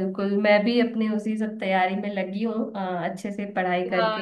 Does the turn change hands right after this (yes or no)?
no